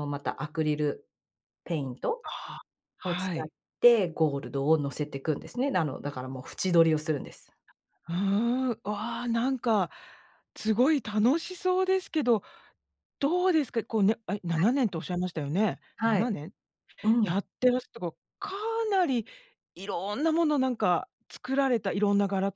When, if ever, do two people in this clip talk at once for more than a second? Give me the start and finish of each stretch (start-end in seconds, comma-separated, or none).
none